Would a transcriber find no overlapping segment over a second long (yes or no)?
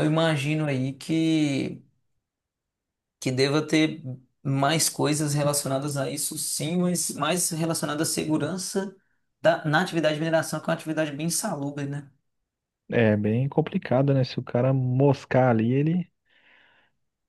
yes